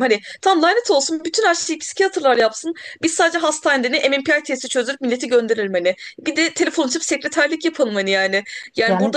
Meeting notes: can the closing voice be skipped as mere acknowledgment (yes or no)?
yes